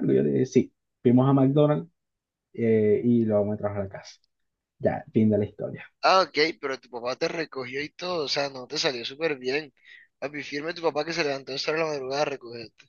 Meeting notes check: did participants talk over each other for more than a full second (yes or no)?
no